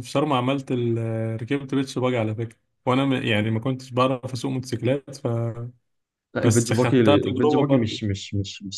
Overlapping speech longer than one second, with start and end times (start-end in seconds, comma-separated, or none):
6.4-8.0